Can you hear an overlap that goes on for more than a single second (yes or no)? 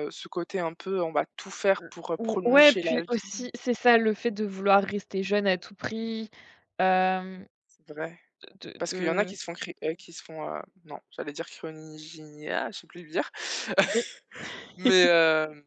yes